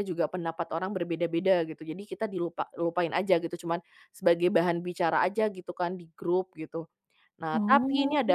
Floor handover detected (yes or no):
no